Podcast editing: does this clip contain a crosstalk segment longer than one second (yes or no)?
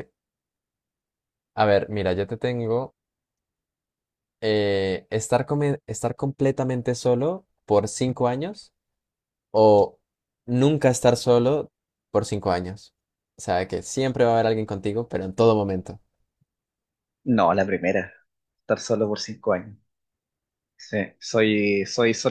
no